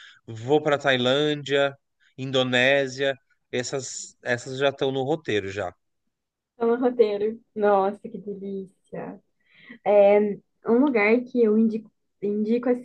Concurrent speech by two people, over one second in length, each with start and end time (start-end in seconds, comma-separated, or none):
none